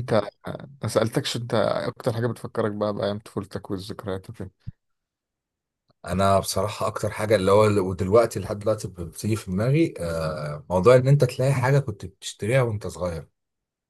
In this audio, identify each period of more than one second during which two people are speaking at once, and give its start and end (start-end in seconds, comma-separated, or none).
none